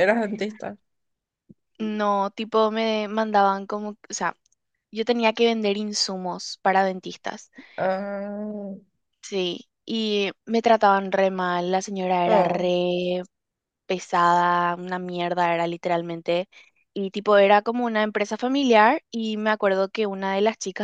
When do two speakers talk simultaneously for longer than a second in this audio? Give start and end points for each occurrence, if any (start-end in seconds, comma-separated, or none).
none